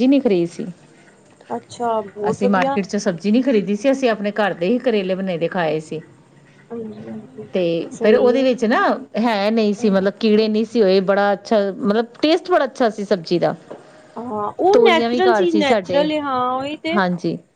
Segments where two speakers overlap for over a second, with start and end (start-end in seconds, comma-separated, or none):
14.7-16.1